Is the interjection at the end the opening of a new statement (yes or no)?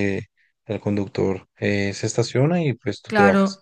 yes